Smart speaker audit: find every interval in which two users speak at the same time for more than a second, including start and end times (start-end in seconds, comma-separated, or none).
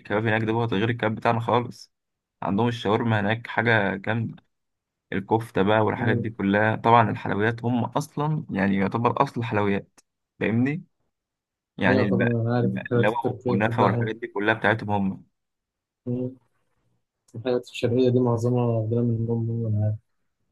11.9-14.1